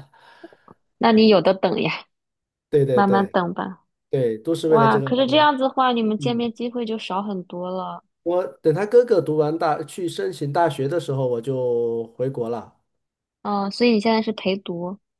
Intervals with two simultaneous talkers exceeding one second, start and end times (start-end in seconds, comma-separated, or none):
none